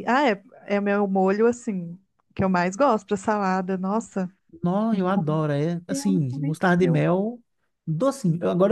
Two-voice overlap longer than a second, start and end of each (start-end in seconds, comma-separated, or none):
4.9-7.1